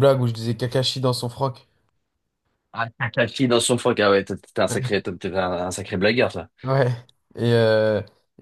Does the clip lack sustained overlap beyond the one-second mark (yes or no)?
yes